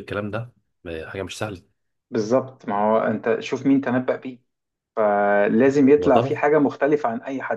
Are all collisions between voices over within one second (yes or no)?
yes